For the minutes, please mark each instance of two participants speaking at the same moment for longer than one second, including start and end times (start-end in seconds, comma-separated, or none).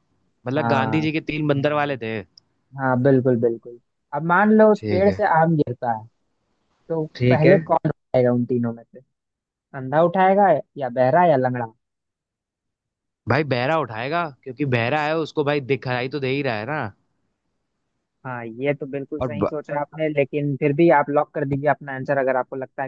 none